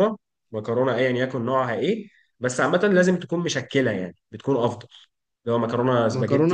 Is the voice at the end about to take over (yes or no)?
yes